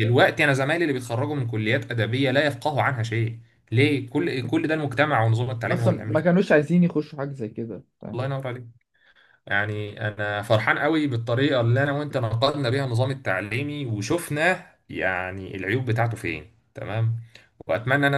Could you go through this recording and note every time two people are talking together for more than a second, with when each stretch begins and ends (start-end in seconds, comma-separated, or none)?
none